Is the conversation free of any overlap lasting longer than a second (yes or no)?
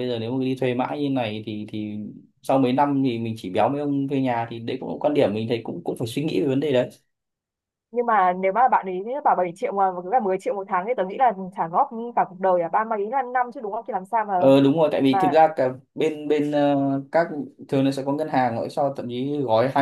yes